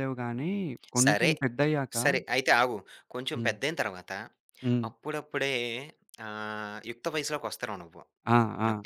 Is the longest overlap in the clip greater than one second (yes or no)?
no